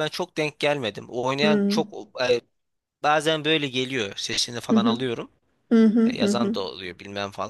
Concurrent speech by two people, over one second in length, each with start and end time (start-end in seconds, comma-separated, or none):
none